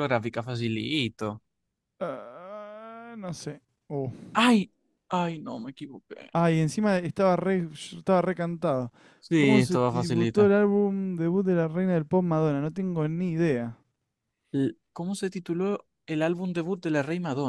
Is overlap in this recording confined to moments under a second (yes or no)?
no